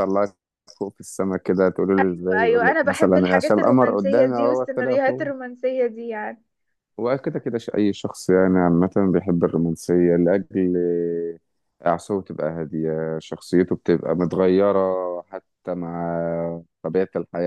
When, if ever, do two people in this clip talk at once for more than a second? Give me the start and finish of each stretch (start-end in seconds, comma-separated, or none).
2.4-5.3